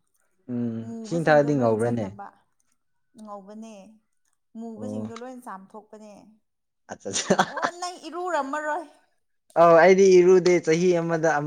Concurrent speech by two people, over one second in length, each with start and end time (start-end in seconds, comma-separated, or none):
0.8-2.2